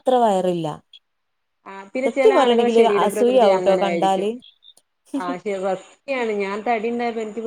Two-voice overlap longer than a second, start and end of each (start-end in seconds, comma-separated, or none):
2.0-4.3